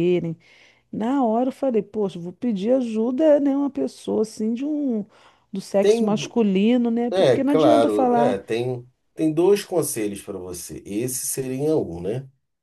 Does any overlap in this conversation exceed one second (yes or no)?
yes